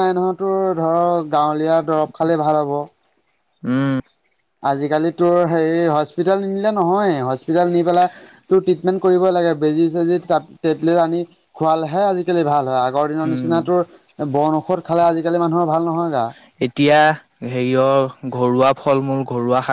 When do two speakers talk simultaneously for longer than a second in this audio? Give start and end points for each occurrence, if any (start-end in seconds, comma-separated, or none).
none